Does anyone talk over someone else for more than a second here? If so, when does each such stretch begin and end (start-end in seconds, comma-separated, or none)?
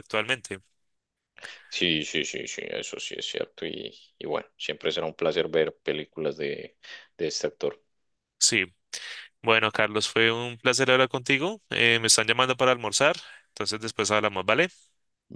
none